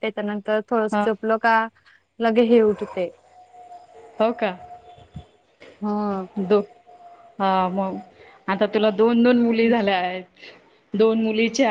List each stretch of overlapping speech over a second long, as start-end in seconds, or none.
none